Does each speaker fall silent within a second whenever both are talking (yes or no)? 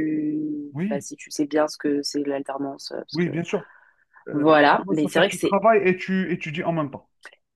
no